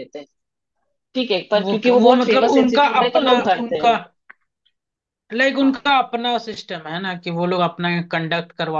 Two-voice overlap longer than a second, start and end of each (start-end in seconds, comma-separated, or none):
1.6-3.9